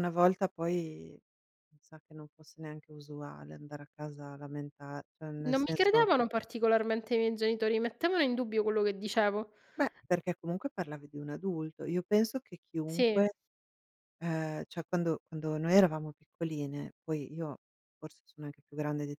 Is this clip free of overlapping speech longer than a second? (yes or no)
yes